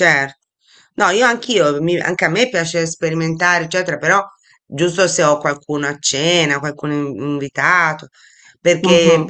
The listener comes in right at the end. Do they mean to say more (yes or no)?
no